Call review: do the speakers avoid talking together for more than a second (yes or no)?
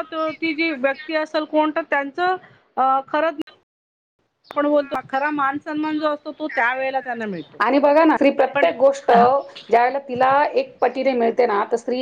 yes